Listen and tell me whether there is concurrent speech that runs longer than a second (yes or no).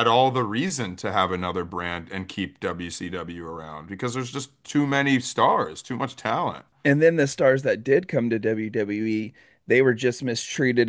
no